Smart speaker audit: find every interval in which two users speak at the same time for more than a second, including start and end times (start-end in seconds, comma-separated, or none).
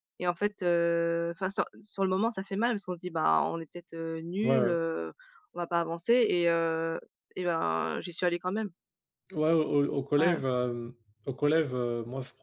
none